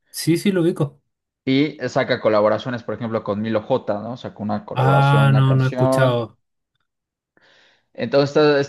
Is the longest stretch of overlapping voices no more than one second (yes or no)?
no